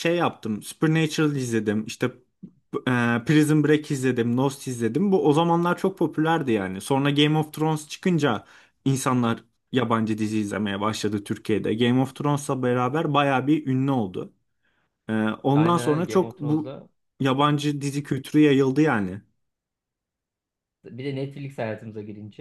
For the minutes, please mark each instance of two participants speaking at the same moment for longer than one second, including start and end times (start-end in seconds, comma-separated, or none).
15.5-16.8